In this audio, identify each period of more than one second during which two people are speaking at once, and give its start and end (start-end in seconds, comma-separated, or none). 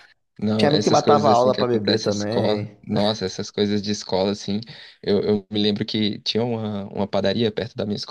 0.6-2.8